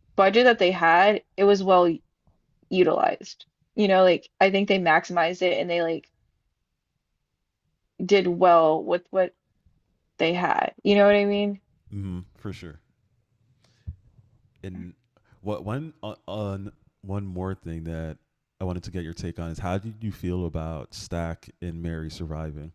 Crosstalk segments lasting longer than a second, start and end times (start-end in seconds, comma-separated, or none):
none